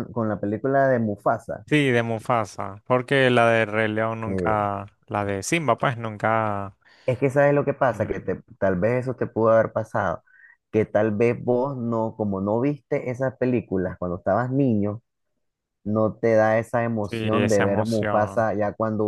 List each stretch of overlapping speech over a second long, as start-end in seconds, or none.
17.0-18.5